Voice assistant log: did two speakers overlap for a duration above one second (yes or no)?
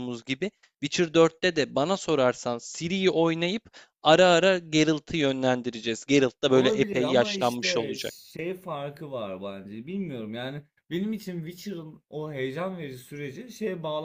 yes